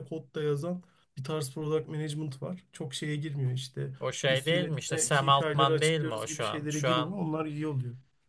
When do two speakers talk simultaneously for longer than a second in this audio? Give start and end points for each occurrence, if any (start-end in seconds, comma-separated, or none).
4.3-7.2